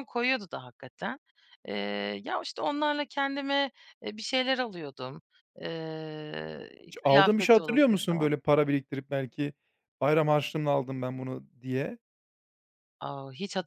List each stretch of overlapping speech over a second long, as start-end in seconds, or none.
6.8-8.3